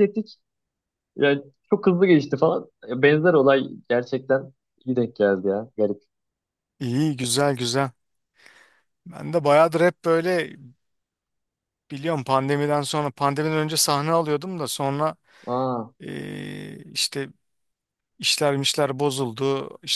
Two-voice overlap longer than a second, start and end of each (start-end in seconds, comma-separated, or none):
none